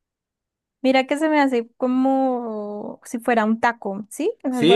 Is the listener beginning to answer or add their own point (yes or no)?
yes